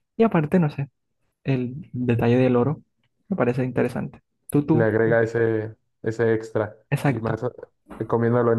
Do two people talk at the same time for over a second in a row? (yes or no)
no